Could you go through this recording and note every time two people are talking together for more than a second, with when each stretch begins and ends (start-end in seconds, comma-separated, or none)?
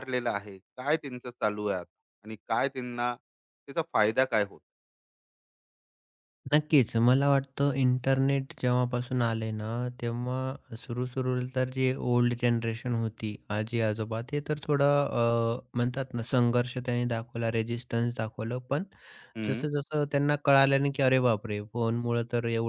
none